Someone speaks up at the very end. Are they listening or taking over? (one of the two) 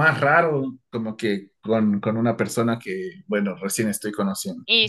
taking over